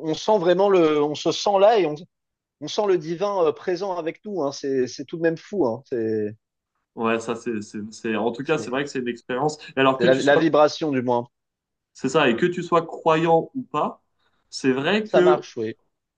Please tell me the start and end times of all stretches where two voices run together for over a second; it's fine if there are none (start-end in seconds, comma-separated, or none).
none